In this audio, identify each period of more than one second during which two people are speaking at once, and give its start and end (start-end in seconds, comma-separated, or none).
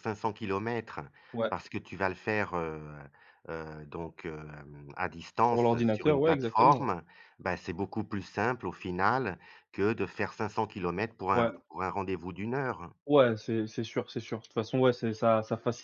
5.5-6.9